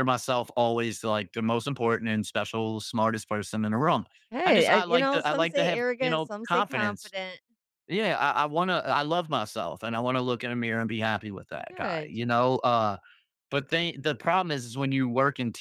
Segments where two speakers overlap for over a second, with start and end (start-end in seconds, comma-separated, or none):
4.5-7.1